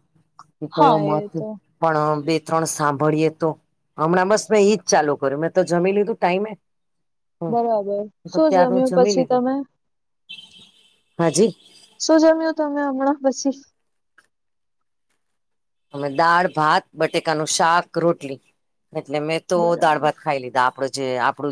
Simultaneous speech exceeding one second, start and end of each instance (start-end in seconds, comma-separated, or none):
7.5-9.4